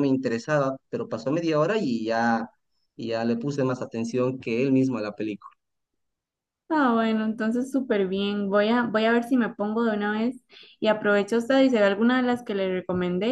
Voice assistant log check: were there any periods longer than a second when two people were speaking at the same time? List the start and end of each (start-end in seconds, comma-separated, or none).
none